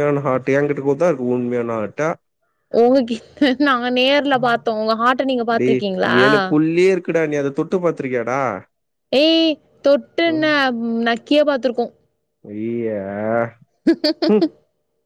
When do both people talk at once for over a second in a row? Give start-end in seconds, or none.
none